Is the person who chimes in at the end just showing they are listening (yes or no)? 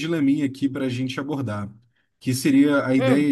yes